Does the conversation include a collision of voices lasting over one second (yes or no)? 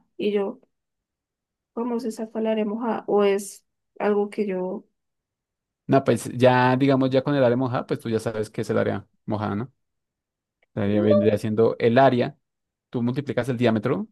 no